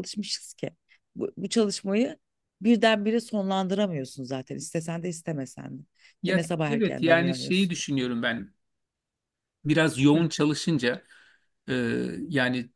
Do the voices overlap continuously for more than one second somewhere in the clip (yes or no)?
yes